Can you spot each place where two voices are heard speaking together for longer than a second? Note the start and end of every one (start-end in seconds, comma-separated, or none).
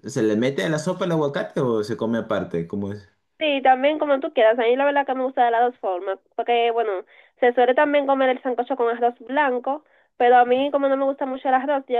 none